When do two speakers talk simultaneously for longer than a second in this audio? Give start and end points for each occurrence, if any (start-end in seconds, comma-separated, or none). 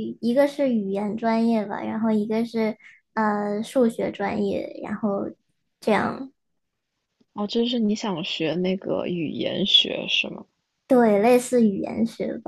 none